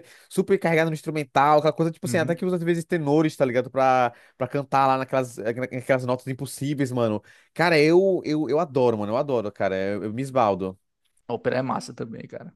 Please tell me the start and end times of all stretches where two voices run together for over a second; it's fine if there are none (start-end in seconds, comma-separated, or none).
none